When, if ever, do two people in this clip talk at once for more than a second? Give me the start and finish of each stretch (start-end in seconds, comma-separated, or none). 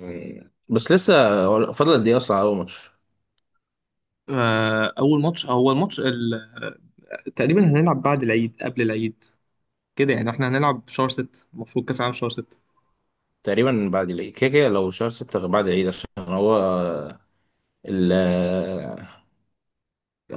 none